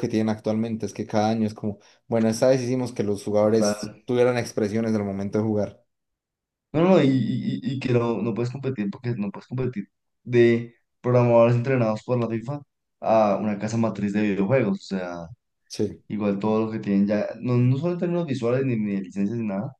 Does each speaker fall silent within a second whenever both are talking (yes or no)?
yes